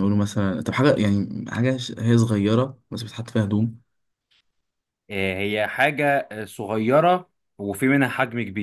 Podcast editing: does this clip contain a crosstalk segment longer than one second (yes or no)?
no